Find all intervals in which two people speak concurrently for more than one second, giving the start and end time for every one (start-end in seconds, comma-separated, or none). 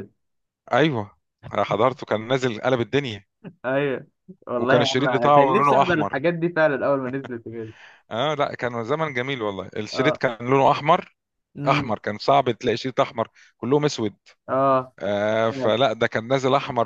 4.6-6.3